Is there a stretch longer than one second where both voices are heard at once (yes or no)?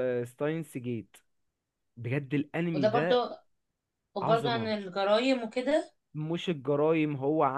no